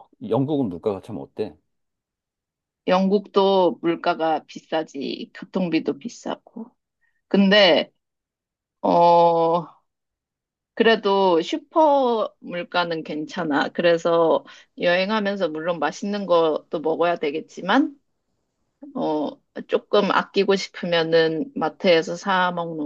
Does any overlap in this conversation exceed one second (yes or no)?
no